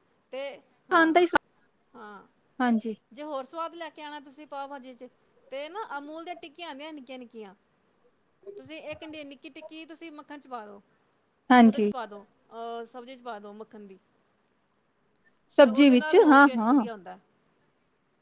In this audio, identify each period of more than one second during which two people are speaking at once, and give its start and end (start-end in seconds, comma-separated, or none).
15.6-16.9